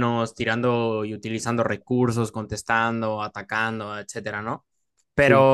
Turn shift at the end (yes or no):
no